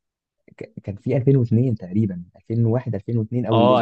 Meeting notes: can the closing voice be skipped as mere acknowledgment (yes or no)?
no